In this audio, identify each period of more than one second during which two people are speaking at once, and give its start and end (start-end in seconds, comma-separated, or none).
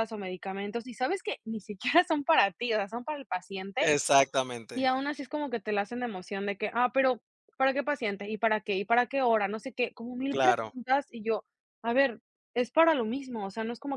none